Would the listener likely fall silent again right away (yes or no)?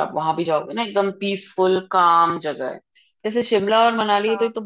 yes